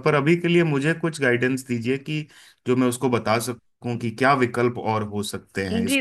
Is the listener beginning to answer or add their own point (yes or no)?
yes